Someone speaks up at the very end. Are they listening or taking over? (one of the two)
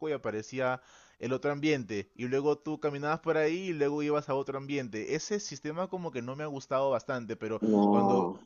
listening